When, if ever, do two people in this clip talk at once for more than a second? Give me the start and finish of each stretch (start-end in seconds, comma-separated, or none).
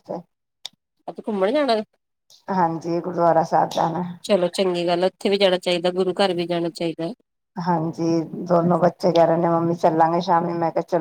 none